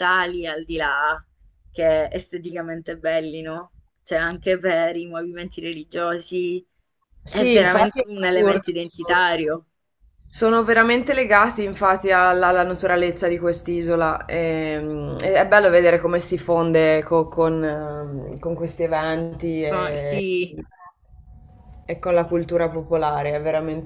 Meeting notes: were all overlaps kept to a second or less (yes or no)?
no